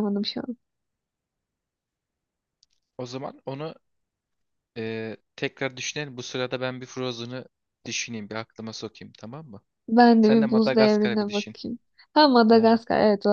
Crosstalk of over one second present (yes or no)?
yes